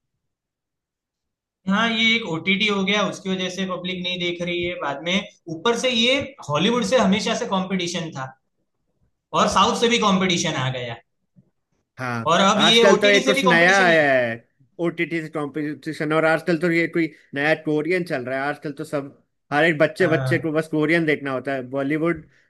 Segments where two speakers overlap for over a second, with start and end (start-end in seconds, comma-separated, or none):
12.3-14.1